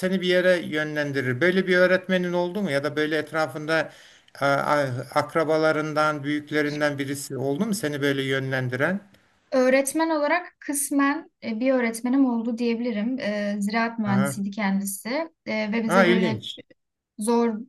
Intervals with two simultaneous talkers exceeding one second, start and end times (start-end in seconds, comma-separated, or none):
none